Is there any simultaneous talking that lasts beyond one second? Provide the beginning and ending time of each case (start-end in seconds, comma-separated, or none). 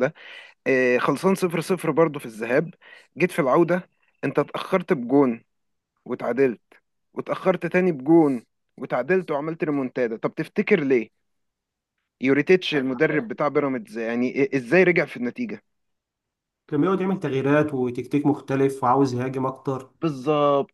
none